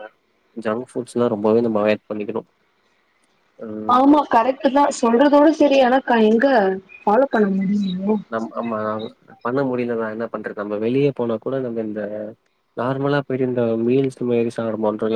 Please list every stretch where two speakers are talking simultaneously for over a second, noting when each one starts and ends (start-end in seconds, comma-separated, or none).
none